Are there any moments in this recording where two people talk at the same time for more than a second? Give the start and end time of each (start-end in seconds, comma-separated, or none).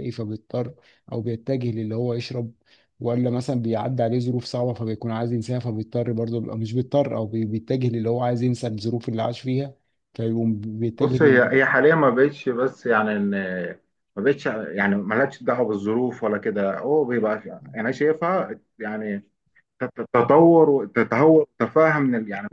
none